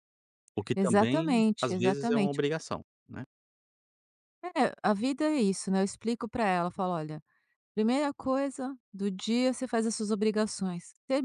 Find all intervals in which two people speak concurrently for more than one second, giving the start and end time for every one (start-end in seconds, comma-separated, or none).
0.7-2.4